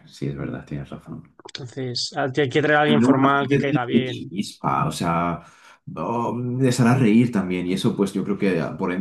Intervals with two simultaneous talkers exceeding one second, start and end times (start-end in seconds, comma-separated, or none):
2.9-4.3